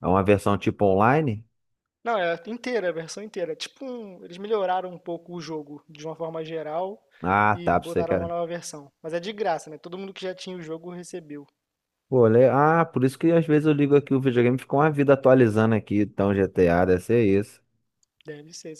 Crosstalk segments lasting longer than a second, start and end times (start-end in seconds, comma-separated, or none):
none